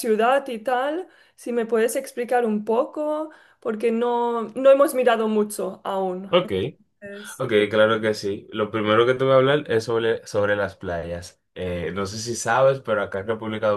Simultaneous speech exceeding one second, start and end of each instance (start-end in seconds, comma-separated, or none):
none